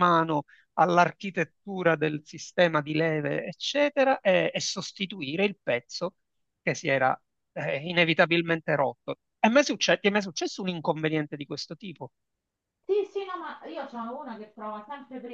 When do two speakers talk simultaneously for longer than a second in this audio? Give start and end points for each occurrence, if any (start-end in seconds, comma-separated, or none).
none